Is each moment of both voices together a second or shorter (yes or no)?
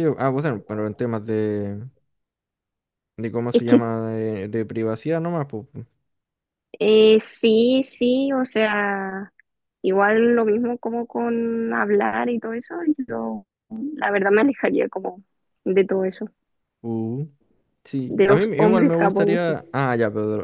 no